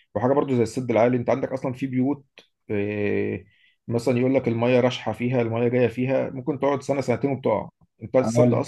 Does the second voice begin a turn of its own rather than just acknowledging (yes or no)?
no